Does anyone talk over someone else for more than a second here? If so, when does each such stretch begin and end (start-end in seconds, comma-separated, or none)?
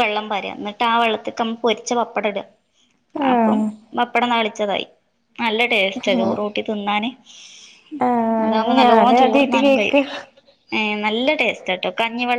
8.4-10.0